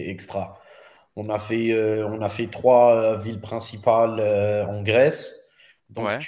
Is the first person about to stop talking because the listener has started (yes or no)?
no